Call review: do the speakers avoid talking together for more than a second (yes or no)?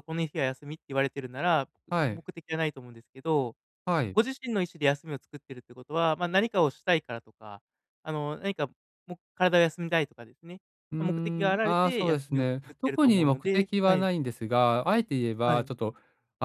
no